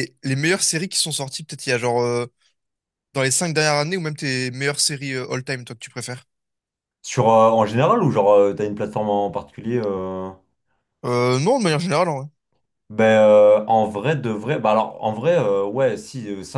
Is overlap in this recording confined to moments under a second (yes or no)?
yes